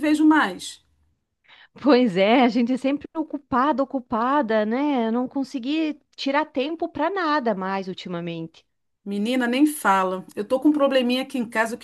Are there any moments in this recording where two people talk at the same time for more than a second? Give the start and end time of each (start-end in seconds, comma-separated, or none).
none